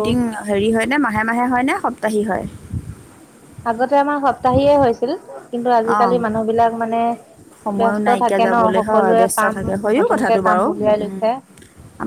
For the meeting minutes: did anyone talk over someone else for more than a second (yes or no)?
yes